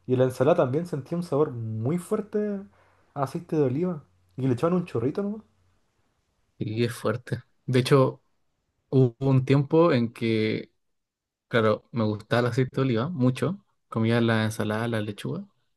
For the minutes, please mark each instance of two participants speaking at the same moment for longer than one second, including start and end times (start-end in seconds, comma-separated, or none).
none